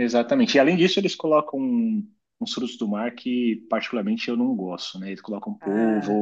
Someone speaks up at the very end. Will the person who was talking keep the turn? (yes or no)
yes